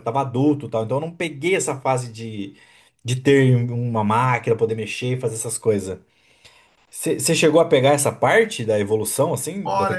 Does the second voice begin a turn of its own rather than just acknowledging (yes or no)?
yes